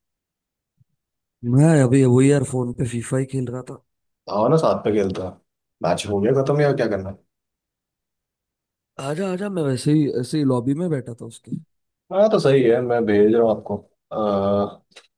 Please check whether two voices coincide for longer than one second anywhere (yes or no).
no